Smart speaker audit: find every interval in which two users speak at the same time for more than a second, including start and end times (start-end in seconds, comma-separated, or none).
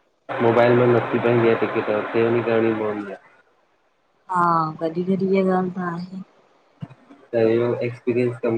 none